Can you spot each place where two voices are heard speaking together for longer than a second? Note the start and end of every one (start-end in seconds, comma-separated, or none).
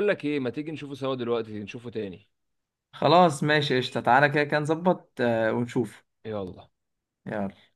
none